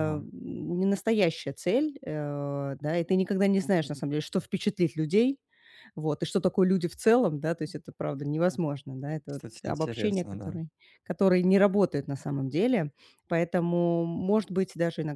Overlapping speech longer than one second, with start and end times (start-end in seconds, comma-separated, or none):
9.2-10.6